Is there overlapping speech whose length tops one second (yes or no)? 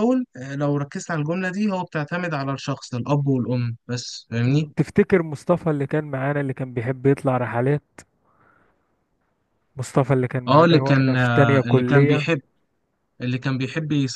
yes